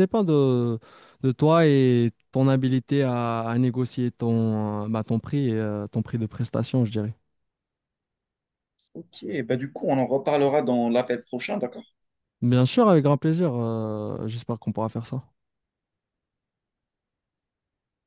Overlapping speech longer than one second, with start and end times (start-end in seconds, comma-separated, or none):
none